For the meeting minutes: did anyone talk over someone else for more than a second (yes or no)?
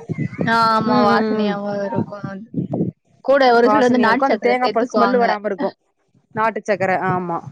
yes